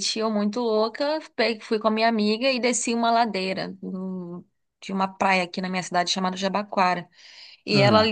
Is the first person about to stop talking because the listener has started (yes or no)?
no